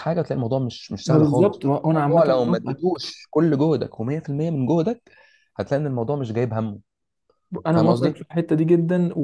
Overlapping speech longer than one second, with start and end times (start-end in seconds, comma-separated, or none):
1.1-3.0